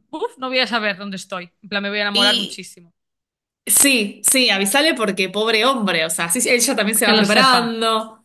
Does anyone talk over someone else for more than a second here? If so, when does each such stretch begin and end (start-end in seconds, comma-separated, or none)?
none